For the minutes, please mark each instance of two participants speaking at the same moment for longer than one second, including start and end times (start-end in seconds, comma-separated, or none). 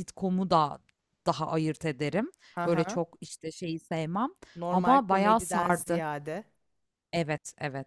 4.7-6.0